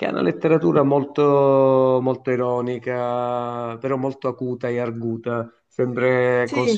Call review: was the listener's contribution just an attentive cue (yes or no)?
yes